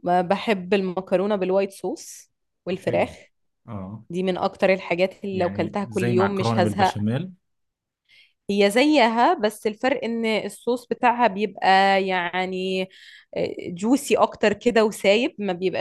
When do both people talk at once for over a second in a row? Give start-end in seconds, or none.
5.3-7.0